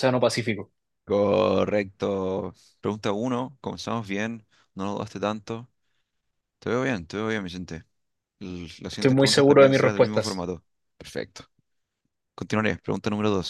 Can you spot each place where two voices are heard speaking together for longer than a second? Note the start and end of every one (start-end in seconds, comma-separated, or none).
8.9-10.5